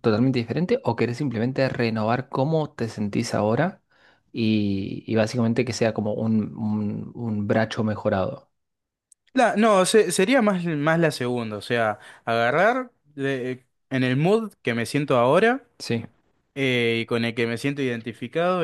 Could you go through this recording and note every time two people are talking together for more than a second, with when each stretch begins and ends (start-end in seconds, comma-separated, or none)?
none